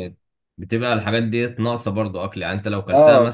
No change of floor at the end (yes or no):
yes